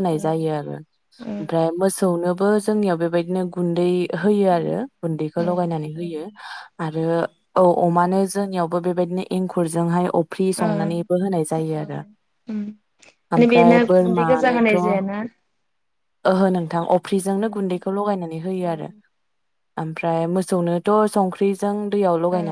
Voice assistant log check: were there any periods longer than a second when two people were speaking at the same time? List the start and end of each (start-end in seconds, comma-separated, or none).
13.4-15.0